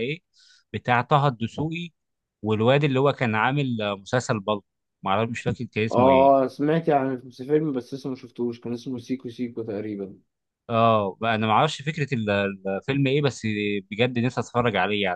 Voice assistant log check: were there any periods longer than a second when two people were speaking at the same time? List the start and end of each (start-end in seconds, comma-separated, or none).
none